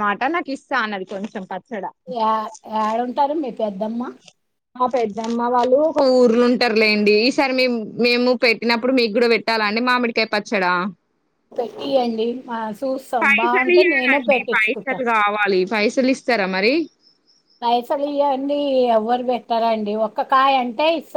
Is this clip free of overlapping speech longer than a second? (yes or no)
no